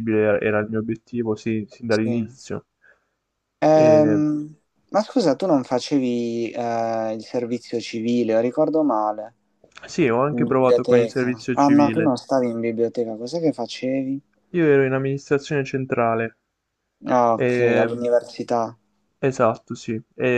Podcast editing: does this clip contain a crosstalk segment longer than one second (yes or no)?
yes